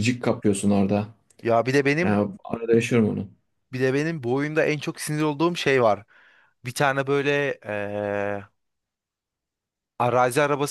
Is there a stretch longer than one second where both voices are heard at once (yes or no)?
no